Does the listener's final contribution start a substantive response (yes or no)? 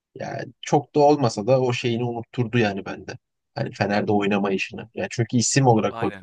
no